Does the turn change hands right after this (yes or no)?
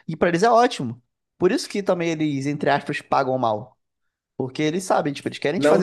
yes